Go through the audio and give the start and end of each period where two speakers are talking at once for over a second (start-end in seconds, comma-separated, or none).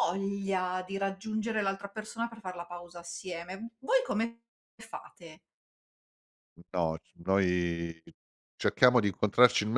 none